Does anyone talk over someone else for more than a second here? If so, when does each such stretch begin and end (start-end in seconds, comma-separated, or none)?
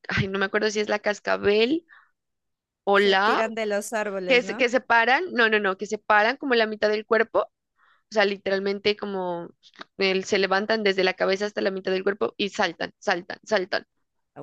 none